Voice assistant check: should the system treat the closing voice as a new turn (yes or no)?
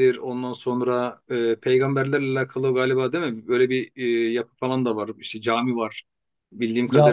yes